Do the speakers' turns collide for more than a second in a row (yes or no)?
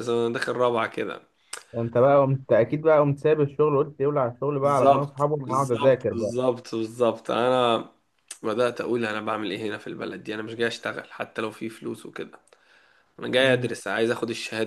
yes